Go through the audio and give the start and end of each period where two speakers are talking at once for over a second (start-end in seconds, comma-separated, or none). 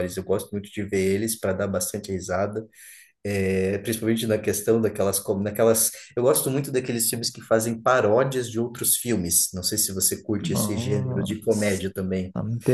10.4-11.9